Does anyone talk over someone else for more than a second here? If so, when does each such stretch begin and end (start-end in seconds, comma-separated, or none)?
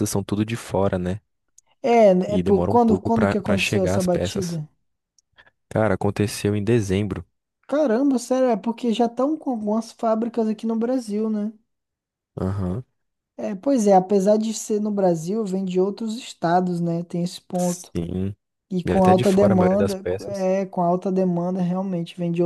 2.3-4.6, 18.9-20.5